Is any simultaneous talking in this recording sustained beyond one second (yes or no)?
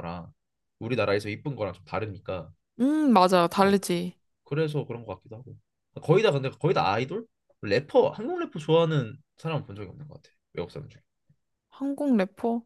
no